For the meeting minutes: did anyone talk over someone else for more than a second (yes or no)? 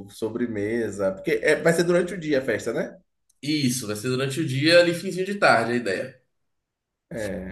no